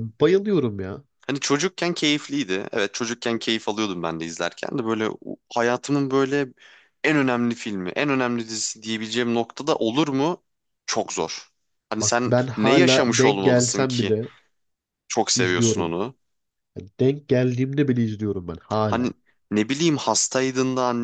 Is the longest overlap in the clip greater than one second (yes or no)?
yes